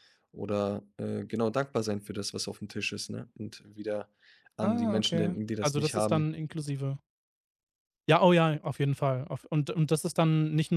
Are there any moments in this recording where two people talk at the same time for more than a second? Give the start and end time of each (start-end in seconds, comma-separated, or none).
4.6-6.3